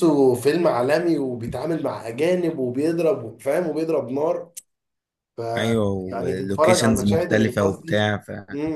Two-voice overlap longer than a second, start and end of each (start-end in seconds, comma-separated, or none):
6.1-8.1